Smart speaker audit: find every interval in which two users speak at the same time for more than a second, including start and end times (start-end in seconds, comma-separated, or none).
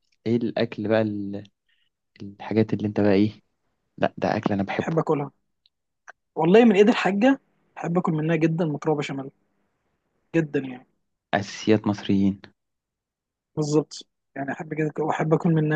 none